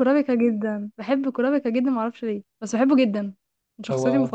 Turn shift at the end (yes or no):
yes